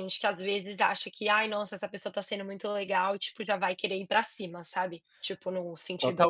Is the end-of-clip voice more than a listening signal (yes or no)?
yes